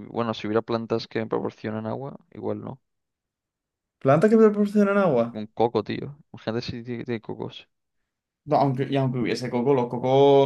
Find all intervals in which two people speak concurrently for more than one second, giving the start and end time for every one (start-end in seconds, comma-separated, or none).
none